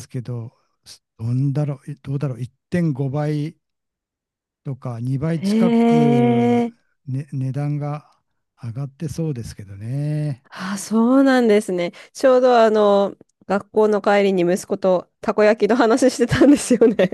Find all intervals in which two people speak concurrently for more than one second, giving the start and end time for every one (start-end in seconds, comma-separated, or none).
5.3-6.6